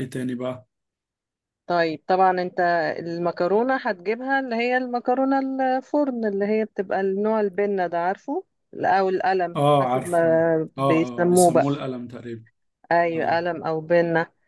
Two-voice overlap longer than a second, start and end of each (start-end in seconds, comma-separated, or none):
9.6-11.6